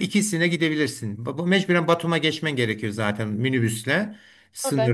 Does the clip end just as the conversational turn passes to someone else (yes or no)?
no